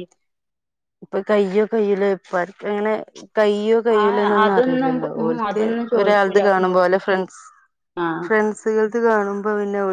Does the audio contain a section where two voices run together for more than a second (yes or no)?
yes